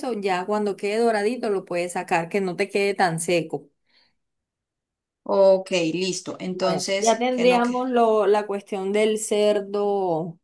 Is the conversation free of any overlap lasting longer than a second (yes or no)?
no